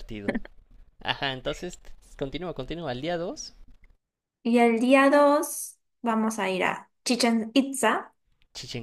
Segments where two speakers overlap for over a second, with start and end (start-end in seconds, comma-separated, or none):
none